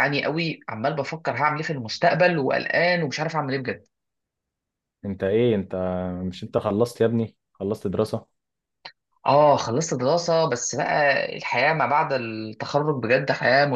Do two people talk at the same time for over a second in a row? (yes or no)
no